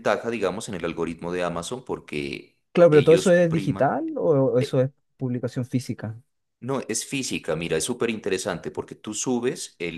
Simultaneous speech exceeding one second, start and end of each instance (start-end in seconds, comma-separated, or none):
2.7-3.9